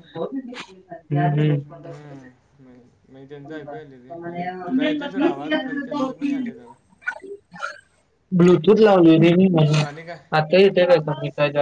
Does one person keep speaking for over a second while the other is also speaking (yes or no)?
no